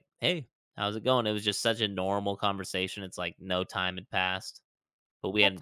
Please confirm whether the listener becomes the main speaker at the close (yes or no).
no